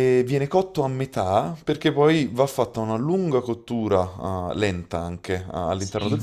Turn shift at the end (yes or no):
yes